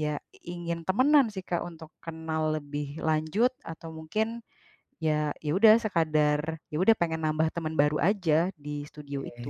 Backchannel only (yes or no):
no